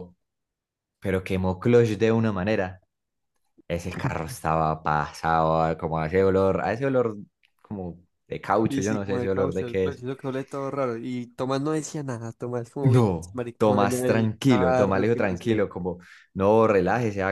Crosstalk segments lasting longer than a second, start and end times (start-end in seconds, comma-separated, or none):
8.6-10.0, 12.8-15.6